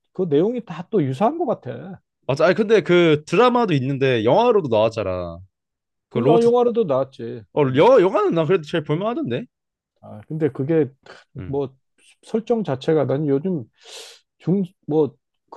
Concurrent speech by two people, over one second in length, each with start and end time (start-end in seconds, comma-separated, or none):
none